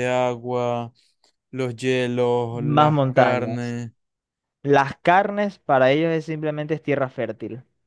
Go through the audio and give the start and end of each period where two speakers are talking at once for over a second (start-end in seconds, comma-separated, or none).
2.5-3.7